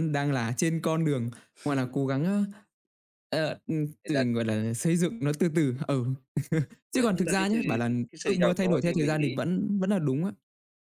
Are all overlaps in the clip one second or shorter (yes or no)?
no